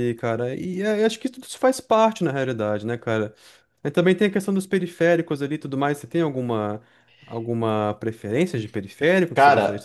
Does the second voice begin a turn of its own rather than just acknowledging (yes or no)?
yes